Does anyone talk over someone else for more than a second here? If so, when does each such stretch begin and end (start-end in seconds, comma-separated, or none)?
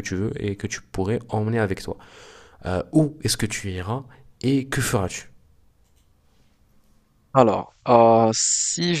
none